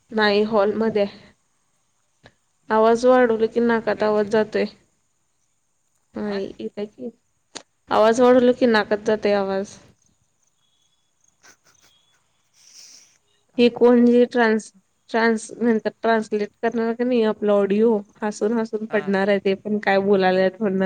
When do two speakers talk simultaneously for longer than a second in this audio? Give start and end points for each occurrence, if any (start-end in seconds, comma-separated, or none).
3.1-4.4